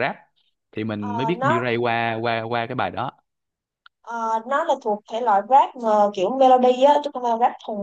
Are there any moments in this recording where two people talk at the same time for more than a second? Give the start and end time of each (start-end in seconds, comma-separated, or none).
none